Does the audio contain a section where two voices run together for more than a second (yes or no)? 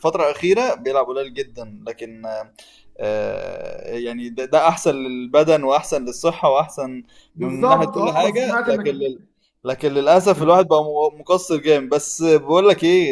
yes